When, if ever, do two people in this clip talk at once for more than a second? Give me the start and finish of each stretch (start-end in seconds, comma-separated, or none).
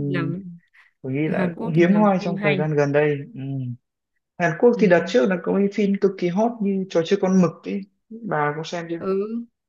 1.2-2.7